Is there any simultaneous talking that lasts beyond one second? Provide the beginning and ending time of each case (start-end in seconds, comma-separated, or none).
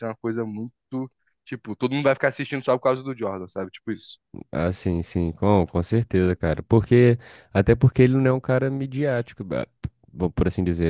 none